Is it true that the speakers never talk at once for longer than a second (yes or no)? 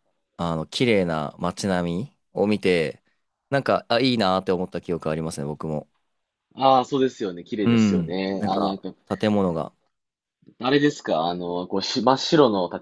no